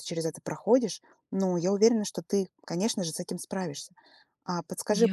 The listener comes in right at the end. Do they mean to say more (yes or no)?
no